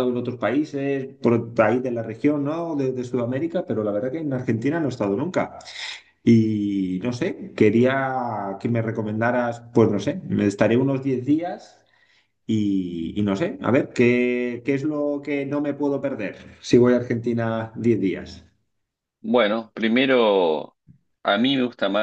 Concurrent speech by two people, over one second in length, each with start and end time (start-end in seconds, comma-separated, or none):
none